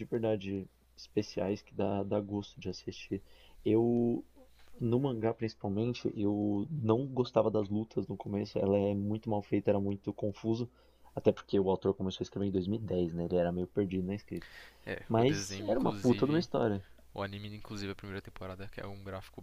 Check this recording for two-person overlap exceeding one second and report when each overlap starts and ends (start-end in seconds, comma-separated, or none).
15.1-16.4